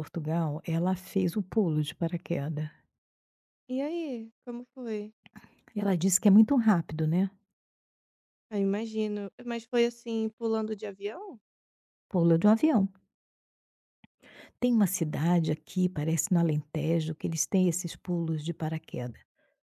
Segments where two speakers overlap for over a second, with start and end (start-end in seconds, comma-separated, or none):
none